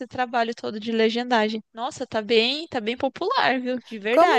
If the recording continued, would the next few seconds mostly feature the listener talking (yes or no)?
yes